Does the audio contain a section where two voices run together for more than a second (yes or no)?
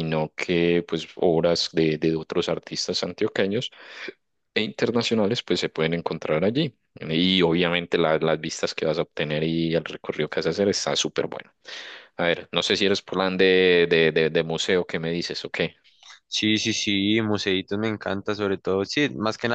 no